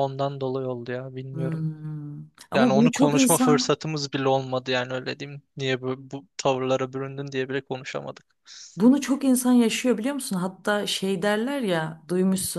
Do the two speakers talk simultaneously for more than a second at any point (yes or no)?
yes